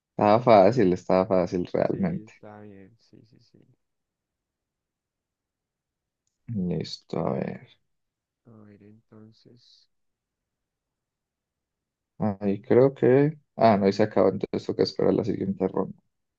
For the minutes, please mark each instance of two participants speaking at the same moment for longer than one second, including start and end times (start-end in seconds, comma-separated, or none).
none